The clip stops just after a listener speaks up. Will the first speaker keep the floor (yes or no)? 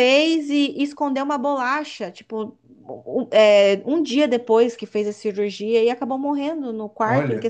yes